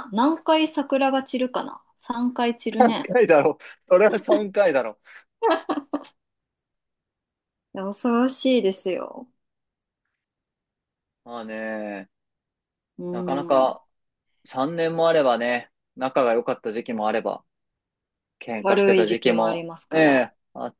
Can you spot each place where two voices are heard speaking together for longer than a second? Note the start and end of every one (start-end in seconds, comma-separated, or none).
18.6-20.3